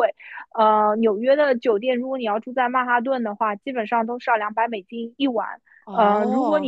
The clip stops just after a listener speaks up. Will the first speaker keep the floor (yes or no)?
yes